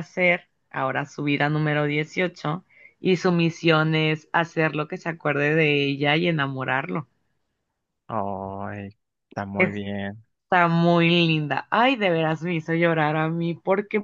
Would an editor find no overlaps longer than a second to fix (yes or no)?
yes